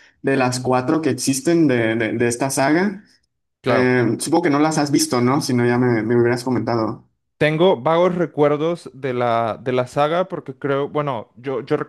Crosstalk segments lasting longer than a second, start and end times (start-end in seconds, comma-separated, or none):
none